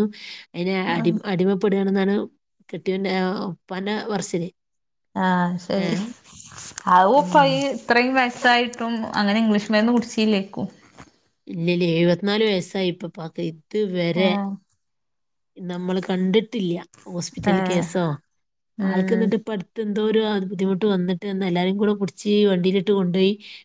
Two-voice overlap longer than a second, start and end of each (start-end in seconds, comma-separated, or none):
none